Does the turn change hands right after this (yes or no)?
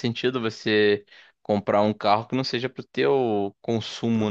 yes